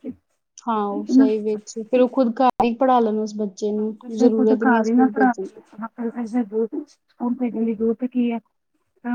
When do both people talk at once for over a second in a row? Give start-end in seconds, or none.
3.8-5.6